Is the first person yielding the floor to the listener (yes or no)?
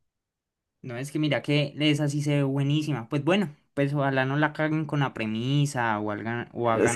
yes